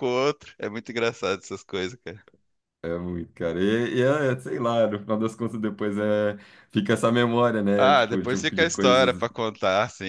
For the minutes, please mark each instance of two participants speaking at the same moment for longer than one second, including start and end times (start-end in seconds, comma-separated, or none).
7.8-9.2